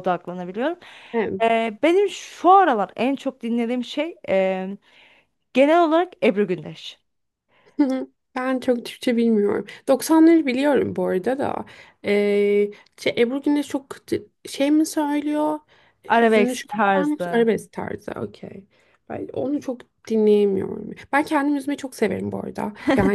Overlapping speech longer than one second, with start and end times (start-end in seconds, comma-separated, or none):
16.2-17.5